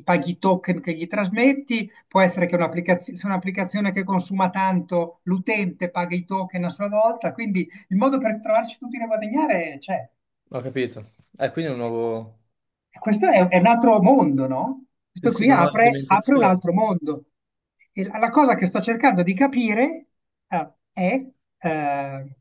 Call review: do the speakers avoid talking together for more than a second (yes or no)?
no